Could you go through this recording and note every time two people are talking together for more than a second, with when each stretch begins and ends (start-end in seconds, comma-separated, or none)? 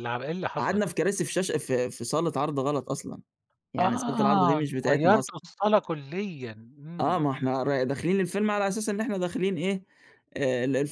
3.8-5.4